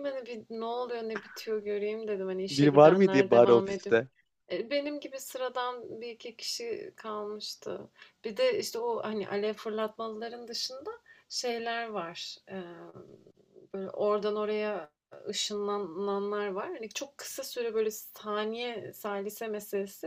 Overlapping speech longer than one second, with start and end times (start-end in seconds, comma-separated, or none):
2.5-4.0